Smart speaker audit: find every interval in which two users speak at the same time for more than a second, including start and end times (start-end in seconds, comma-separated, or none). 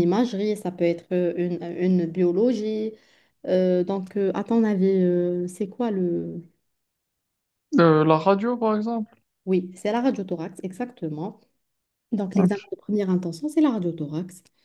none